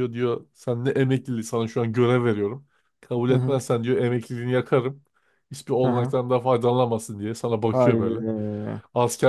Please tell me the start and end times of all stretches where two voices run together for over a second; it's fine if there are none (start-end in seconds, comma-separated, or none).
none